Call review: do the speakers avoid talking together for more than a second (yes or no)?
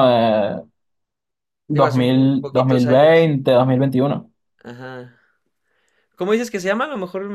no